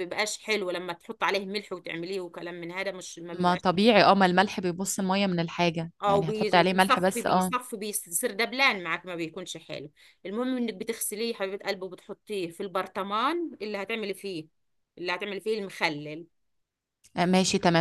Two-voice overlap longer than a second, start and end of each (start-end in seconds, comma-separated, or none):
6.0-7.5